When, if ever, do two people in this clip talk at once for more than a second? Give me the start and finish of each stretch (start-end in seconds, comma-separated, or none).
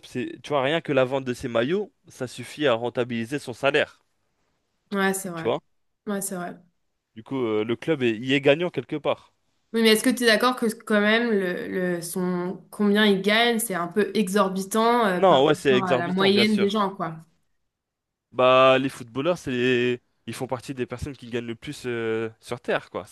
15.2-16.8